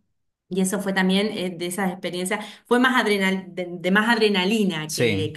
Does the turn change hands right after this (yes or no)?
no